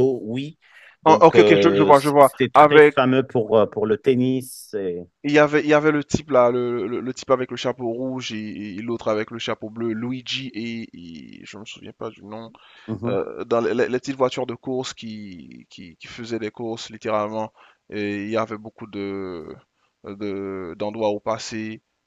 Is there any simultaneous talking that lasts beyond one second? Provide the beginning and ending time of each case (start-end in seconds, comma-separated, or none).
1.1-3.0